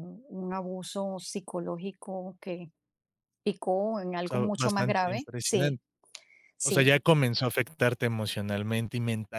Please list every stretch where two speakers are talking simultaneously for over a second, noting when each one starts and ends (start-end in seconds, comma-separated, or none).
4.2-5.8